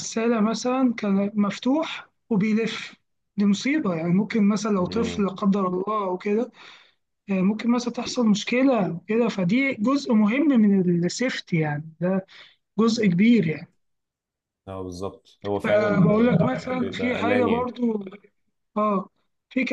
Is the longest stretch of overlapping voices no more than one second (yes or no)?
no